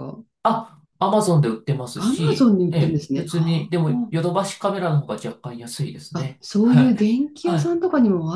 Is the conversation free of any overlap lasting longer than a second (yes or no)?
no